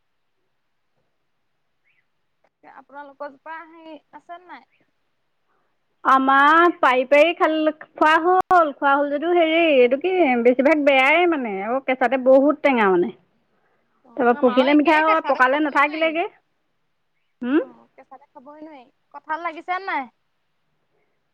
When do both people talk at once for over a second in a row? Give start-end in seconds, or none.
14.1-16.1